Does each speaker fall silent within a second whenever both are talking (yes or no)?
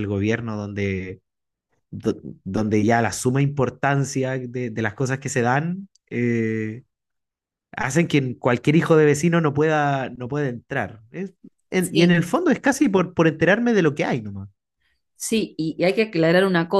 yes